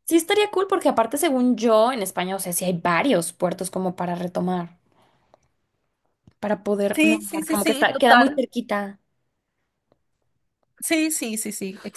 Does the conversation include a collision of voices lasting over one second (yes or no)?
yes